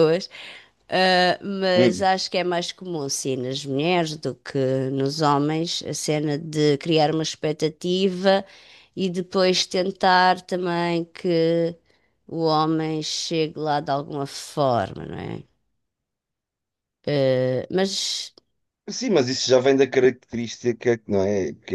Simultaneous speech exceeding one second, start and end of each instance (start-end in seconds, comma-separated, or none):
none